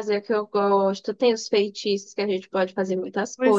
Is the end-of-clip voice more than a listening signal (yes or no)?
yes